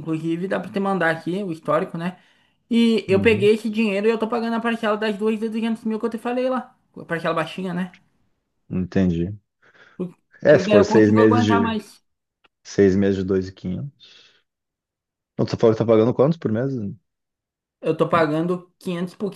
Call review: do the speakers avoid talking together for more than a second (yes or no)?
no